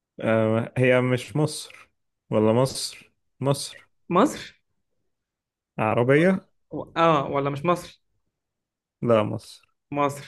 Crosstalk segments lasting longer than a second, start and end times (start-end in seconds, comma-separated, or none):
none